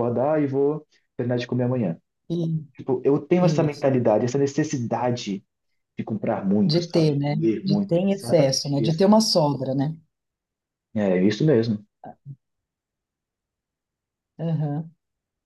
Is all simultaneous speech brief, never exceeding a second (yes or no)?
no